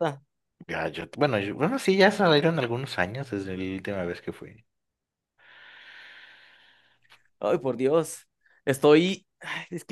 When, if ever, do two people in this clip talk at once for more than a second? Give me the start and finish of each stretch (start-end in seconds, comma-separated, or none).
none